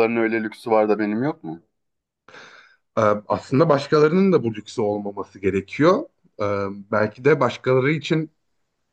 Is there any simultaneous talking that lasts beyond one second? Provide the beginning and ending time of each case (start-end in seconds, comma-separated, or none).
none